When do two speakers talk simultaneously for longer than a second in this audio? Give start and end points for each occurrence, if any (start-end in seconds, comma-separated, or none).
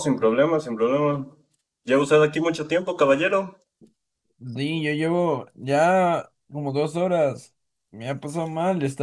none